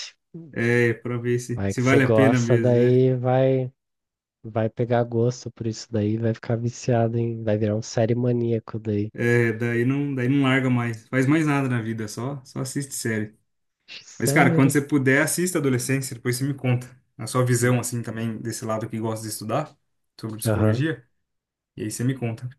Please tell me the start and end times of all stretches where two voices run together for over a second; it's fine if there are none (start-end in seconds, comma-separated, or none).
1.5-3.0